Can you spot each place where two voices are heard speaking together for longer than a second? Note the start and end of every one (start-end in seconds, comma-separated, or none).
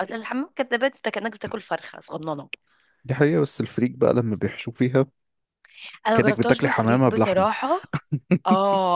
6.1-7.5